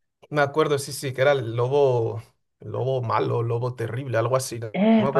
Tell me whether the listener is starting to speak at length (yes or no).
yes